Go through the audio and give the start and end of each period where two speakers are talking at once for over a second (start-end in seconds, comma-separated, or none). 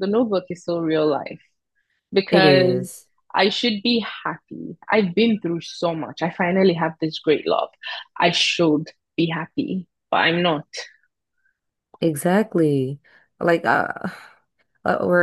none